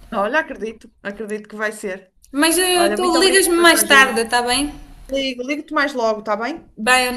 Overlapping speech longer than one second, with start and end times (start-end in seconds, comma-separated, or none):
2.8-4.2